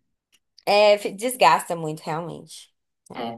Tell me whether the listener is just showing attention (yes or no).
no